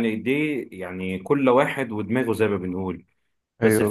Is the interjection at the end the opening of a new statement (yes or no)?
no